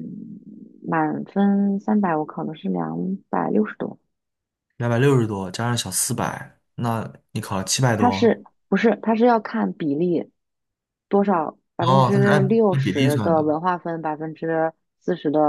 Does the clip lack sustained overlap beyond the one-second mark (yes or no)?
no